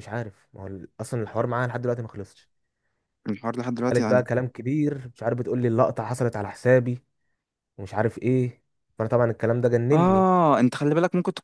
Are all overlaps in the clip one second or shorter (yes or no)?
yes